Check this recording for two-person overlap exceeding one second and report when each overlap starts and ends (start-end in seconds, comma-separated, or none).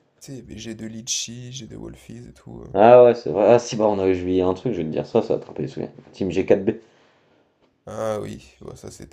none